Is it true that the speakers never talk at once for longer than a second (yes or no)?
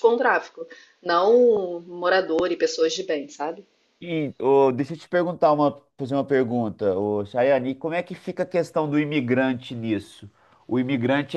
yes